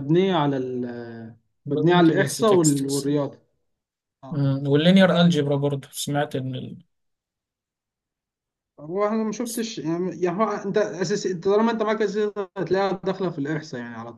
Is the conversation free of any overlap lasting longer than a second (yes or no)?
no